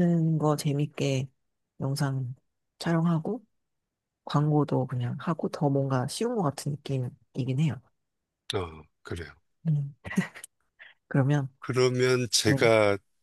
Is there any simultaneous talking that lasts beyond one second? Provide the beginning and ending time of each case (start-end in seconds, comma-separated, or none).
none